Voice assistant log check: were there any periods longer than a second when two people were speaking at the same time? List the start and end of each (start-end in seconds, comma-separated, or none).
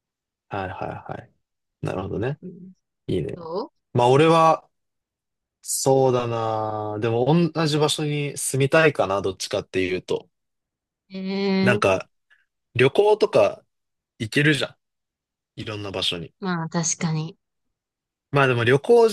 none